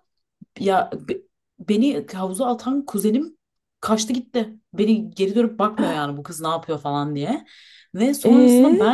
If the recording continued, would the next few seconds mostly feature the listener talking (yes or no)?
no